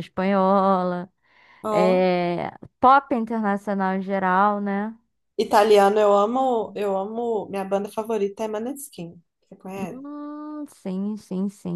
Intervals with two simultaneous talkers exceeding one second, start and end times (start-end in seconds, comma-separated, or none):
none